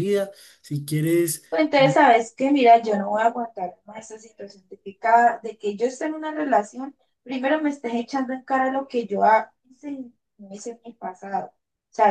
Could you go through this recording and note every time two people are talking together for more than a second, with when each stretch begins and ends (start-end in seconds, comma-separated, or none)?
none